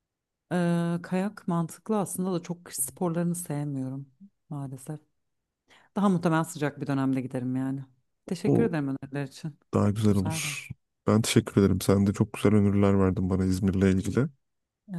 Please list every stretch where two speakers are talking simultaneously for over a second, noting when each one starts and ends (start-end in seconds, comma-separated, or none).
none